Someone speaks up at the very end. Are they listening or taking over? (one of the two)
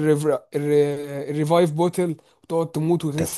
taking over